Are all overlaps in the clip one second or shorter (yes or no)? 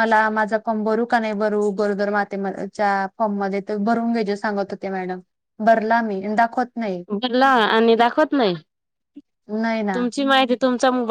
yes